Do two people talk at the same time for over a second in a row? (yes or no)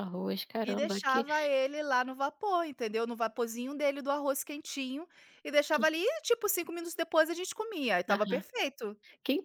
no